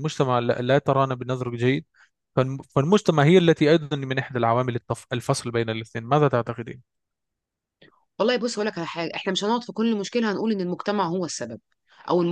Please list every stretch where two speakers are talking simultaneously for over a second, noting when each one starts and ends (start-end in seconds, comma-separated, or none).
none